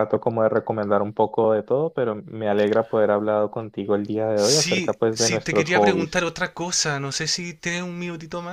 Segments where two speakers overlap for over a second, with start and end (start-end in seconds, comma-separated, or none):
4.3-6.2